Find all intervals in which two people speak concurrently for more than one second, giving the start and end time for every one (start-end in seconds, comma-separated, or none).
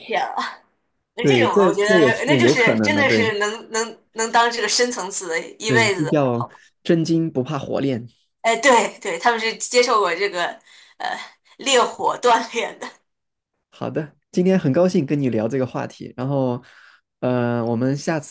1.2-3.3